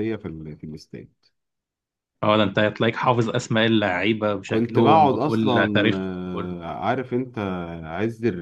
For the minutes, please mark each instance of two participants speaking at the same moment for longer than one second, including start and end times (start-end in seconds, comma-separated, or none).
4.5-6.5